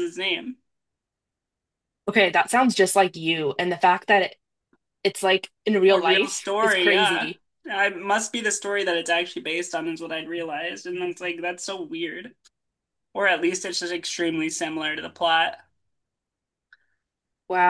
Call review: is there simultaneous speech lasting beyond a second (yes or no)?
yes